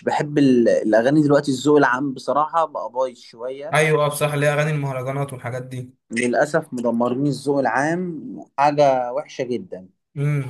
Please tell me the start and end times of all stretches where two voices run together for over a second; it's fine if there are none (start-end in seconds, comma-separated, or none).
none